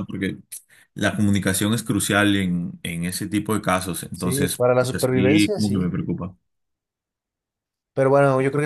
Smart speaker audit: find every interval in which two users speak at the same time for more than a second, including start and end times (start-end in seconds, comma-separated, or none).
4.1-5.9